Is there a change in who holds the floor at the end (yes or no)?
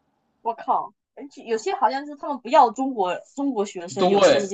yes